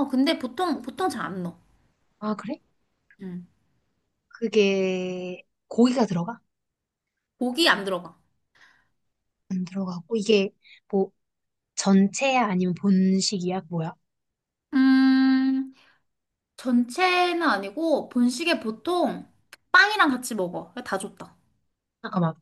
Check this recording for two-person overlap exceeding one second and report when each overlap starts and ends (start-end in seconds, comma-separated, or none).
none